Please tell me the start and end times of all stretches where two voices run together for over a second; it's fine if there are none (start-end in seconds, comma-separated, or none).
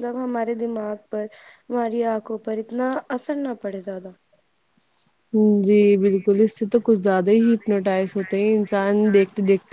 none